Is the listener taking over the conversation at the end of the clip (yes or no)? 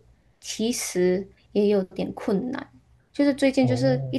no